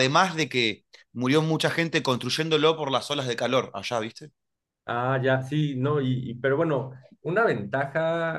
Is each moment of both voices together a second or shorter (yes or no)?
yes